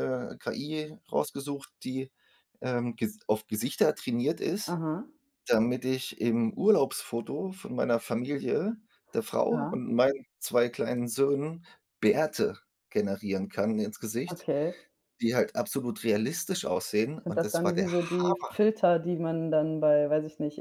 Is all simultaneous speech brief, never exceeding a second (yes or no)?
no